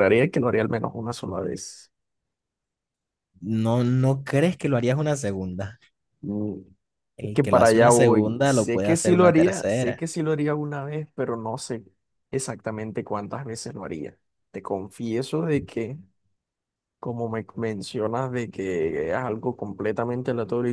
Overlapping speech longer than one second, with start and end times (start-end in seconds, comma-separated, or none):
7.2-10.0